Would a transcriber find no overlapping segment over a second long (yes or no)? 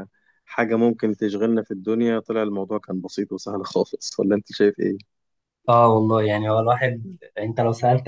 yes